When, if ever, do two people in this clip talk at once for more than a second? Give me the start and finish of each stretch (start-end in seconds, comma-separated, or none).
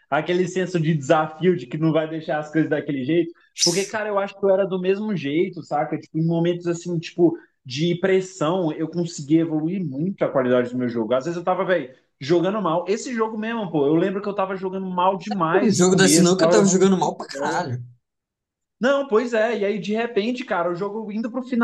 15.6-17.7